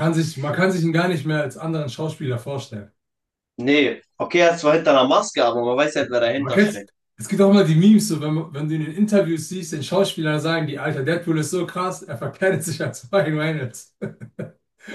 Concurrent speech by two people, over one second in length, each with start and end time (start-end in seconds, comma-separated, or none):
none